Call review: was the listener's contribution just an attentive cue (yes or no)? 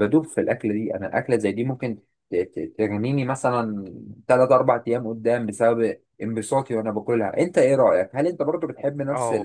no